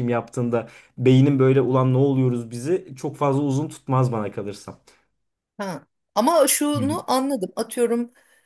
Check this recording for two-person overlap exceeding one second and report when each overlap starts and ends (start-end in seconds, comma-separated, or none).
none